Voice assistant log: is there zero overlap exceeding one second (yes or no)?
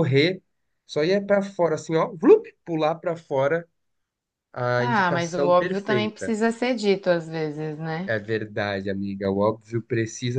no